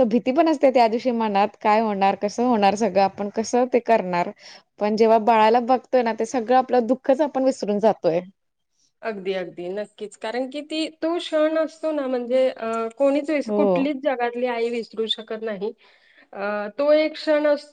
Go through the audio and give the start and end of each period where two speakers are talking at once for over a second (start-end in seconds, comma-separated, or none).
none